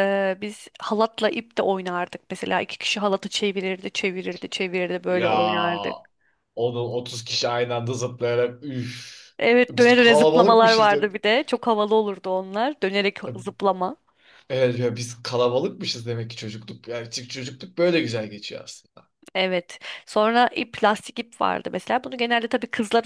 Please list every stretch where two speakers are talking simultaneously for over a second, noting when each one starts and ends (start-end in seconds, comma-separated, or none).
9.7-11.1